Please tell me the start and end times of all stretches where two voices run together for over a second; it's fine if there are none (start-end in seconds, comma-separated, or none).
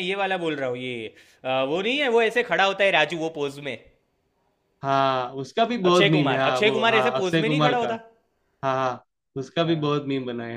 5.9-7.9